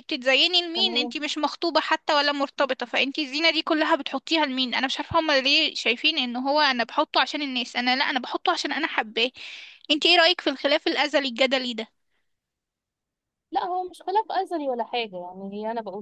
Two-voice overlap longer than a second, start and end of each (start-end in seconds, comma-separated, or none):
none